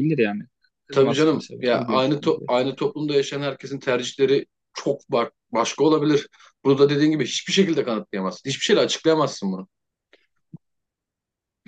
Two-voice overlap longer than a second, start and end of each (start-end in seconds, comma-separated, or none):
0.9-2.3